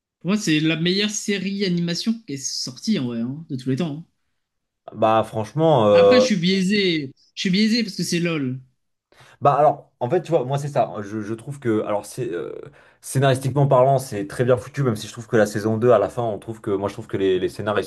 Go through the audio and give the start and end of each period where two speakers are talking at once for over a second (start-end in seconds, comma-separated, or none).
none